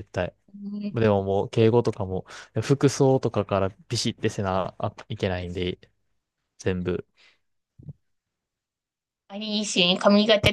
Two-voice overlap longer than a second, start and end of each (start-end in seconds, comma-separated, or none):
none